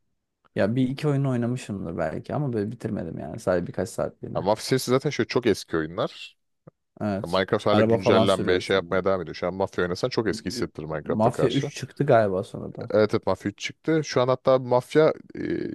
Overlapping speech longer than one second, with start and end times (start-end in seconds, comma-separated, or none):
7.2-9.0, 10.3-11.7